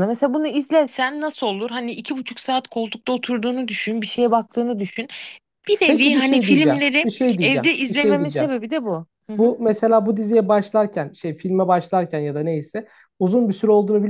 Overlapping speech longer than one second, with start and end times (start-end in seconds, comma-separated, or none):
5.8-8.5